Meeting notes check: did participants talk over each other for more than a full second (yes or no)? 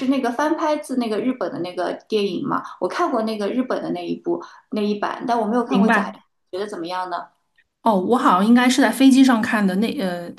no